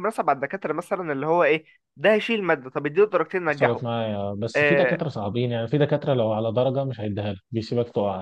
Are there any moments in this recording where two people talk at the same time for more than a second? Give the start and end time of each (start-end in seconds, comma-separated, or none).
none